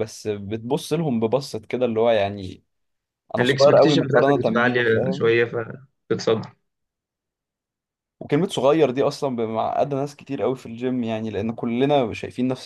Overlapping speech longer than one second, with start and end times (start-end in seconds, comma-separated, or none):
3.4-5.3